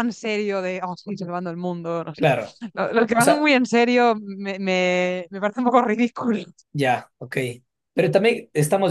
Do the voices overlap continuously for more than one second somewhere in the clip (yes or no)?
no